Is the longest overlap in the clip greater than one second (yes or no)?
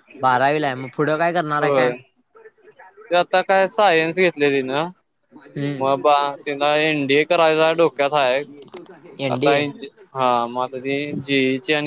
no